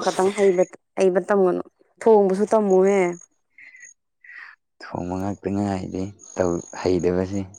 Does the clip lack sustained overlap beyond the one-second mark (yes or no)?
yes